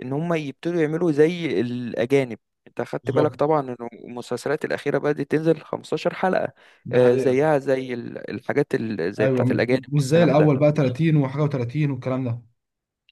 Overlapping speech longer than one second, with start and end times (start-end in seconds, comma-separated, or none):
9.2-10.5